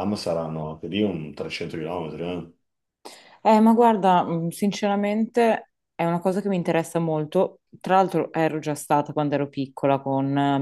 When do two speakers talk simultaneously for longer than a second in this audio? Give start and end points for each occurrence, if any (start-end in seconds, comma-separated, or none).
none